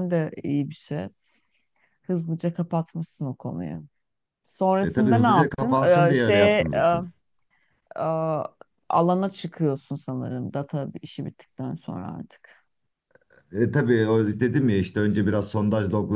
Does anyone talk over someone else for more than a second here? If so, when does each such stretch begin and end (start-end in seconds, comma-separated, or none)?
4.8-6.6